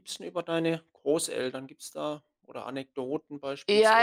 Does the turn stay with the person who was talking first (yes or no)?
no